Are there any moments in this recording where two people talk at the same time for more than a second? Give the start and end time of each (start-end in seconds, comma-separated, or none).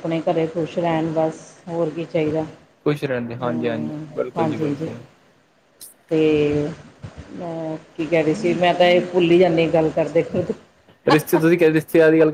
3.4-4.9